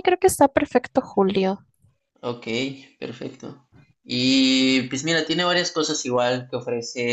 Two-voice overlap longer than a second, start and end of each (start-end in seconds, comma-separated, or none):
none